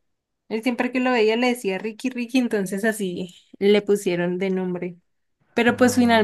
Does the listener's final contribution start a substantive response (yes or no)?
no